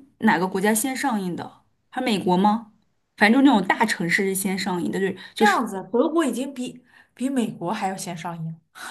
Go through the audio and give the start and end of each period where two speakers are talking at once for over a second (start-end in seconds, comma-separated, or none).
none